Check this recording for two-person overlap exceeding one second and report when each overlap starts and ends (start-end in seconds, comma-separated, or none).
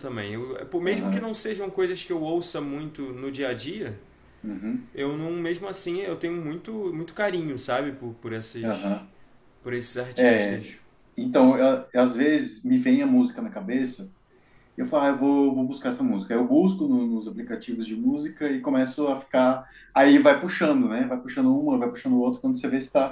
none